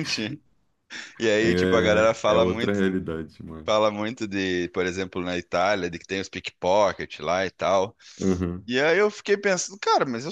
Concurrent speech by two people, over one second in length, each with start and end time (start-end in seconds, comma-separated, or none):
1.4-2.8